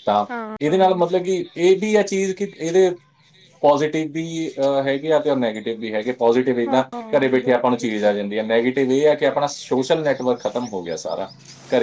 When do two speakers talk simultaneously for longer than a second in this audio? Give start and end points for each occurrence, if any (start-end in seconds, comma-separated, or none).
6.7-8.1